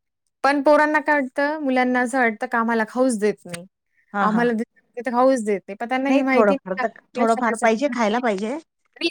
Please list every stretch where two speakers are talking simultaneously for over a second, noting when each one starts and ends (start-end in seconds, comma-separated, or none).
6.1-8.3